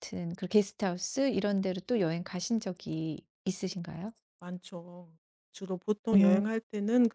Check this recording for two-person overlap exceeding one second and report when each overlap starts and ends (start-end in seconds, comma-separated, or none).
none